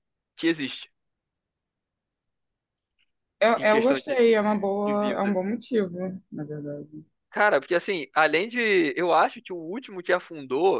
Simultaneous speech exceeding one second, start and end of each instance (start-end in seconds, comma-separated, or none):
3.5-5.4